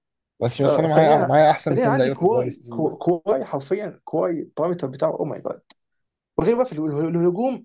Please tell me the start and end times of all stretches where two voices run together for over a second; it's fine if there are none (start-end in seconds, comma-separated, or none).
0.7-2.9